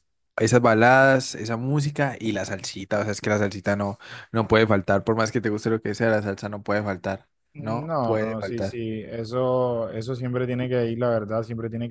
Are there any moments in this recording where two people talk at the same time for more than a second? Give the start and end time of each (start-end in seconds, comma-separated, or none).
7.5-8.8